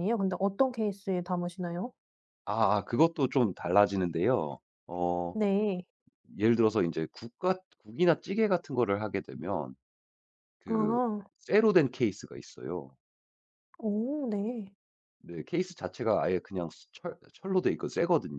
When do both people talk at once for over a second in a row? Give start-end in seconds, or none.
none